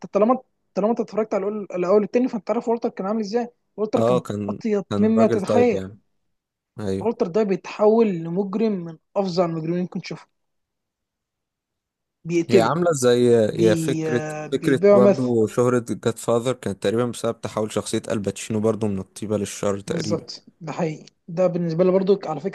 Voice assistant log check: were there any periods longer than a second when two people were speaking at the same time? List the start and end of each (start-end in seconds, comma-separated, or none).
4.0-5.8, 13.5-15.3